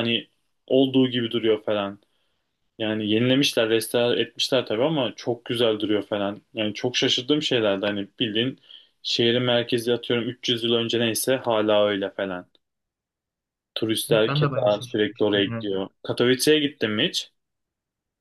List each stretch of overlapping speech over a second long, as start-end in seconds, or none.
14.1-15.7